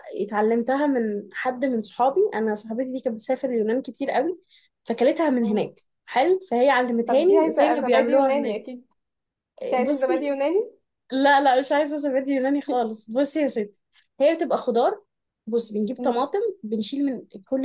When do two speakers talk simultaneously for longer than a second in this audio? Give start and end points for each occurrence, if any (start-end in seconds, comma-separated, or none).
7.1-8.6